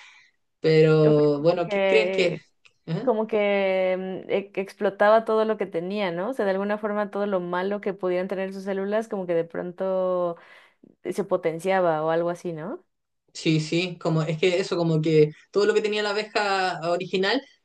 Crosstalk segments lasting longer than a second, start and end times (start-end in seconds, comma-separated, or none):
1.0-2.4